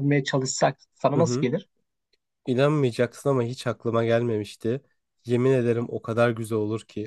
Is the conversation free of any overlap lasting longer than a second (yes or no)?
yes